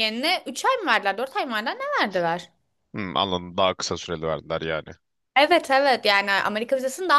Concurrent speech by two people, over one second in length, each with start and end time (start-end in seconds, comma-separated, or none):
none